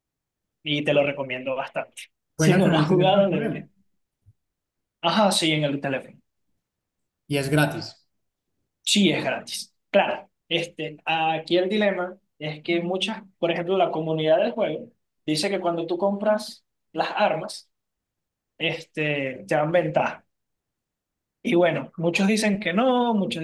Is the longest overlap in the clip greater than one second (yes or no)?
yes